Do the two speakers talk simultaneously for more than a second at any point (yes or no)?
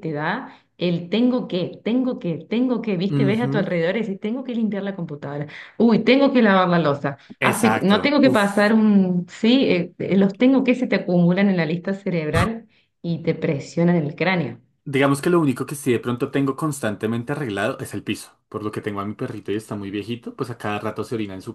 yes